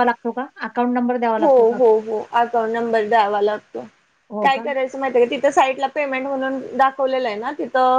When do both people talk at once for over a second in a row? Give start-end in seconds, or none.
none